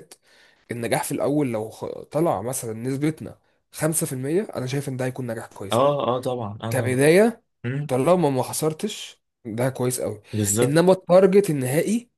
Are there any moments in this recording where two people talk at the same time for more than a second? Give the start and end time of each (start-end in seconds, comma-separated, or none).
none